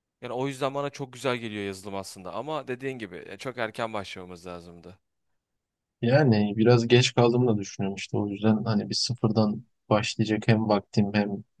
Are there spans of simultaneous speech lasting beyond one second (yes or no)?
no